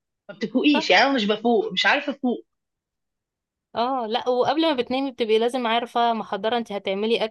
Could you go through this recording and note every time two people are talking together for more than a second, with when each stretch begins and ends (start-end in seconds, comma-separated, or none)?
none